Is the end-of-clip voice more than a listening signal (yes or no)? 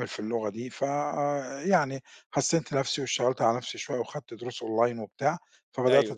no